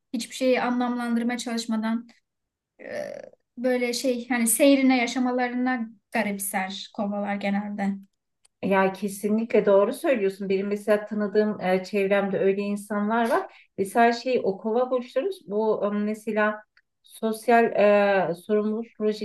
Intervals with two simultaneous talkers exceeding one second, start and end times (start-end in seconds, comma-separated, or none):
none